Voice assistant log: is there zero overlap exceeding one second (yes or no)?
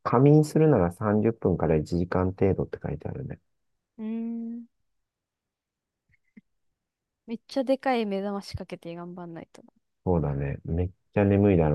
yes